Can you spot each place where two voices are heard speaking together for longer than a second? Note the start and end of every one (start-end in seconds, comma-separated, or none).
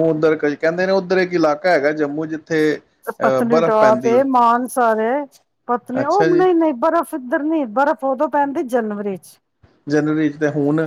none